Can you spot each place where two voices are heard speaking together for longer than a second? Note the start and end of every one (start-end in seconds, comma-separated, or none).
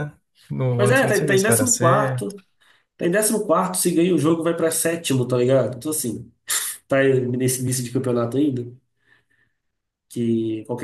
0.8-2.4